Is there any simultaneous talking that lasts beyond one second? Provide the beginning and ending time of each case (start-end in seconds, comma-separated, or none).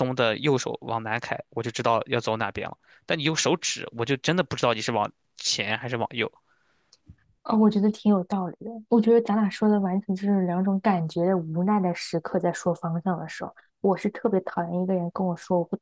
none